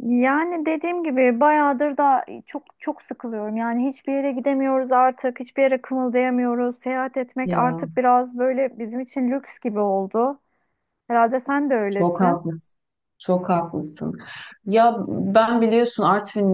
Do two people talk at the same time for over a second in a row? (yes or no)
no